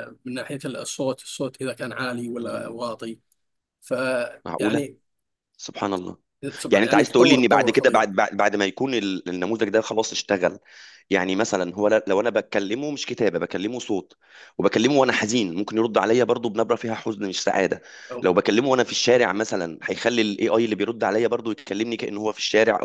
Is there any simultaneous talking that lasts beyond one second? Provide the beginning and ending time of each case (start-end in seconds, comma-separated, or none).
6.7-8.1